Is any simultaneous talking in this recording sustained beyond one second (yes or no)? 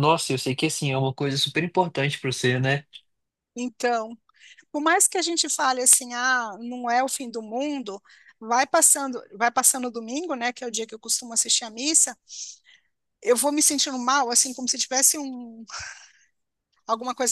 no